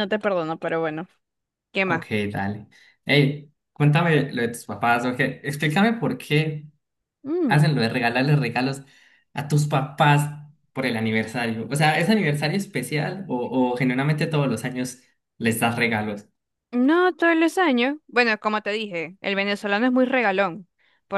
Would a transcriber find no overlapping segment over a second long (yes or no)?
yes